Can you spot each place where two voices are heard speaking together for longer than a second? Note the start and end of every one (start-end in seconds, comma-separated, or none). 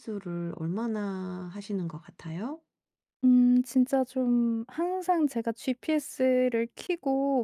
none